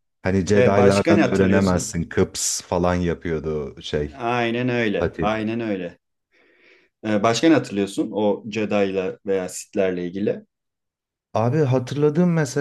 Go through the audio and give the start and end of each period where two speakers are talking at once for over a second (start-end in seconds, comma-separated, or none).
0.5-1.9